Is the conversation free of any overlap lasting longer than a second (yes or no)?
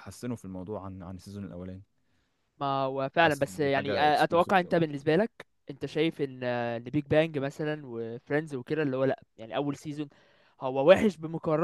no